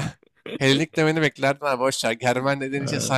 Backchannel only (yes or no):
yes